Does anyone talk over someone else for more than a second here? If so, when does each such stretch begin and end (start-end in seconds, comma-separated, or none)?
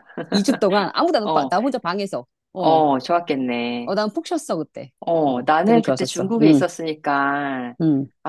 5.0-6.6